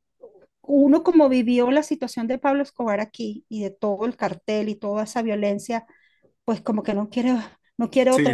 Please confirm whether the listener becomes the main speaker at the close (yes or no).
no